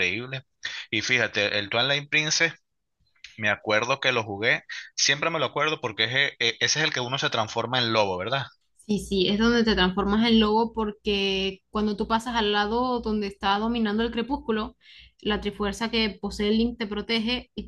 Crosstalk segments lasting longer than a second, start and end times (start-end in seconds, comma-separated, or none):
none